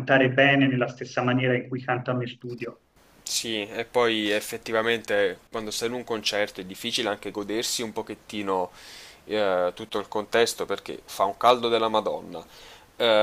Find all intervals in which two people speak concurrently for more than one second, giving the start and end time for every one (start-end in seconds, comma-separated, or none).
none